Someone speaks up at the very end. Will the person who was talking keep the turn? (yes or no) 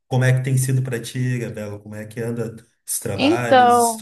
no